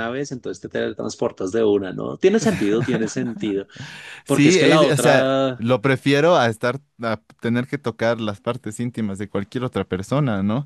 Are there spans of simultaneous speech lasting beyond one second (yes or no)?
yes